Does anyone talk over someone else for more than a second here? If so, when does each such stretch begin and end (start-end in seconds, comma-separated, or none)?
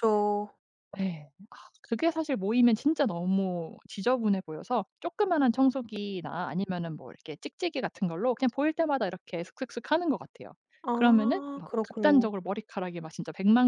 10.9-12.3